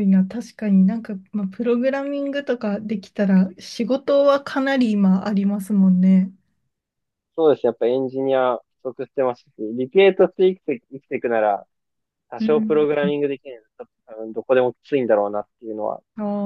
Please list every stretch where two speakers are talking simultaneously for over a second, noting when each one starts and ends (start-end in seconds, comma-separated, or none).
none